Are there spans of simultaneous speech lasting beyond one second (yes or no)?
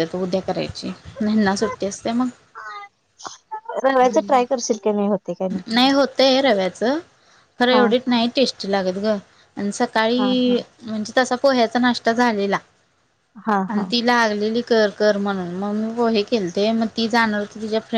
no